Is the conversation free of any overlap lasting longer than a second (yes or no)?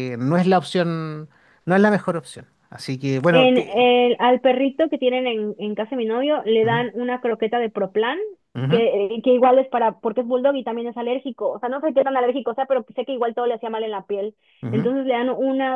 yes